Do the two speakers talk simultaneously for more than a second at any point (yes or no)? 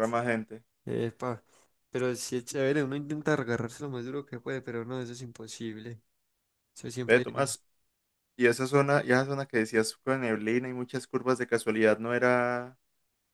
no